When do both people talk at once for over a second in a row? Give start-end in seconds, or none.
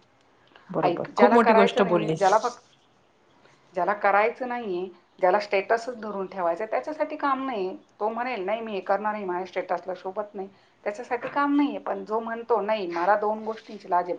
0.8-2.3